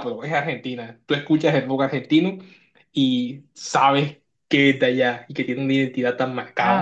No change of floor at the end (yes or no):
no